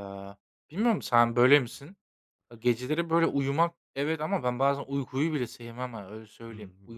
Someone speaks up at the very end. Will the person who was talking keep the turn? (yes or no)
no